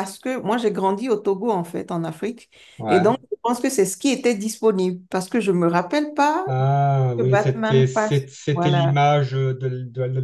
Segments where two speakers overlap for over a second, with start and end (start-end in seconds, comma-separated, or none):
7.2-8.9